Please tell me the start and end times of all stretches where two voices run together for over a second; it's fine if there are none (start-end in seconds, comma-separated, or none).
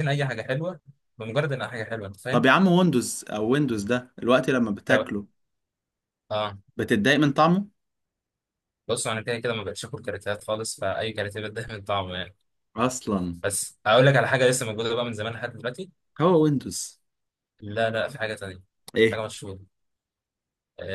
none